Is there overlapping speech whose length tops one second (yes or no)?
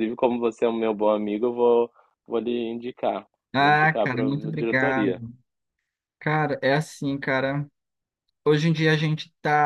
yes